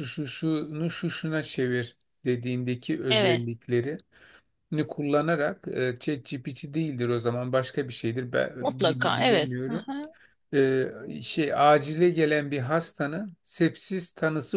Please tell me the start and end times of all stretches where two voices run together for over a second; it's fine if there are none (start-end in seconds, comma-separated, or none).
8.6-9.8